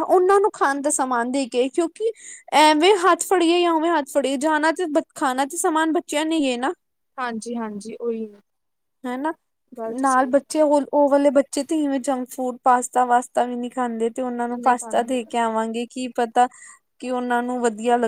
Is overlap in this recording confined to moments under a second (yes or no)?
yes